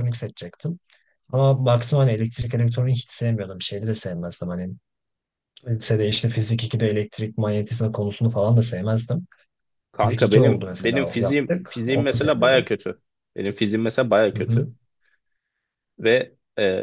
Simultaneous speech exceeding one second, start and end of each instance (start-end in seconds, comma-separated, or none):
10.0-12.7